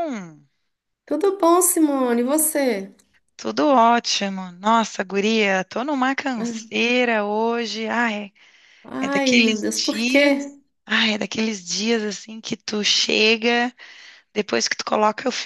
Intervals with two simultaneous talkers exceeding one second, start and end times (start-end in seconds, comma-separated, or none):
9.0-10.3